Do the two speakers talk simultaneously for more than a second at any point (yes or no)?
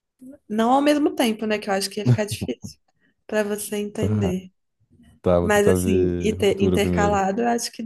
yes